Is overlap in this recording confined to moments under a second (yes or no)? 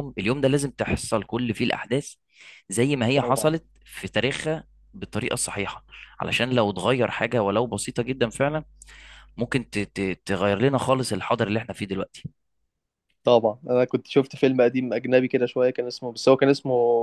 yes